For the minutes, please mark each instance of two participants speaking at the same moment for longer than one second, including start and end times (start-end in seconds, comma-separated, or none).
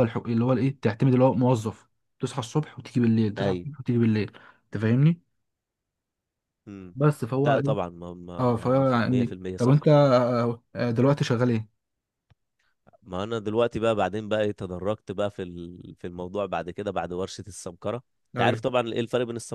8.4-9.8